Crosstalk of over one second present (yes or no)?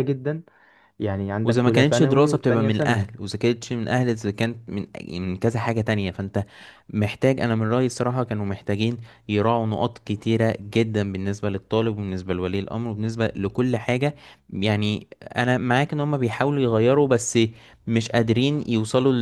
yes